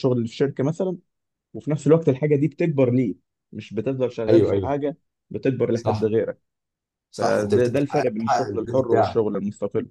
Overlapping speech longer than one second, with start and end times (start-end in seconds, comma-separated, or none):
7.2-9.2